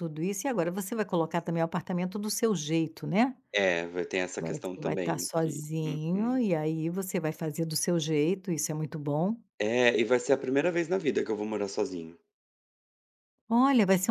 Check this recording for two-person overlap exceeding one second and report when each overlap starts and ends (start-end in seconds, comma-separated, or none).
4.4-6.4